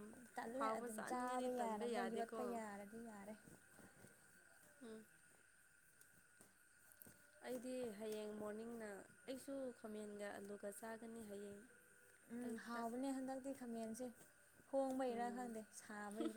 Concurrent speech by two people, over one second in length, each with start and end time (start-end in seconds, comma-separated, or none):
0.6-2.4